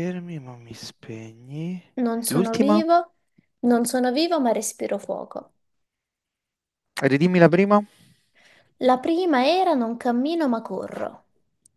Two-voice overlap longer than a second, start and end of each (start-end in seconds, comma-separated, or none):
none